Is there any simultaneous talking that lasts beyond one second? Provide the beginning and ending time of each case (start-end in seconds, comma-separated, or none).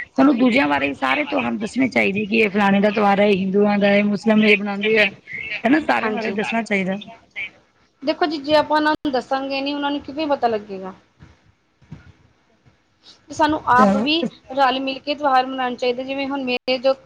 1.6-3.0